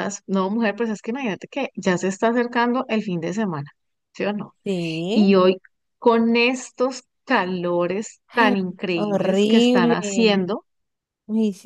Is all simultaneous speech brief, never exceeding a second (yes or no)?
no